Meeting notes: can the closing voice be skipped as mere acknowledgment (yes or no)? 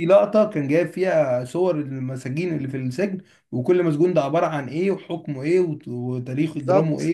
no